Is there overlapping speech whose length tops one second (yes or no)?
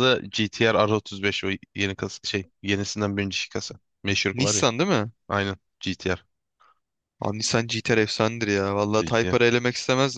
no